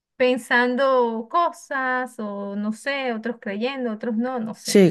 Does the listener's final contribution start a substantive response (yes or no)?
yes